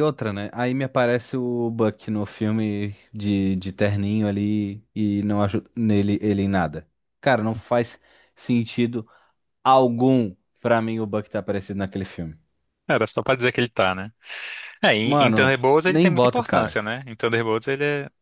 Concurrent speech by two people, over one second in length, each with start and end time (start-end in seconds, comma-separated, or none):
15.0-16.8